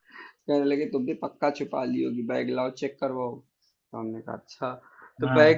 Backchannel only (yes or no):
yes